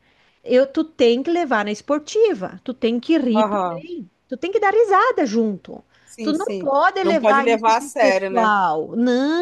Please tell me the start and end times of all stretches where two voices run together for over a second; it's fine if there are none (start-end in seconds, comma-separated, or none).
6.2-8.5